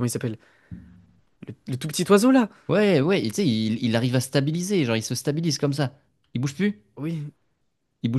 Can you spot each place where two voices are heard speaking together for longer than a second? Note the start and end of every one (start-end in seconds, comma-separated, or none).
none